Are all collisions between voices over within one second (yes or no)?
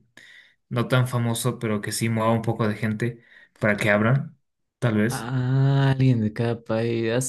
yes